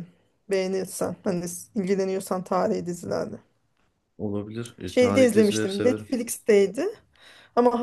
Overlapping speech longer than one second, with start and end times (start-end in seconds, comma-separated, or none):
4.9-6.1